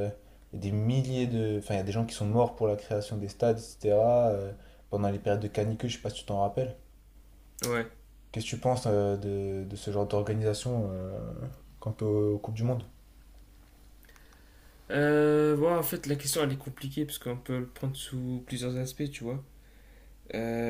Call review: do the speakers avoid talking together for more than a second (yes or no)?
yes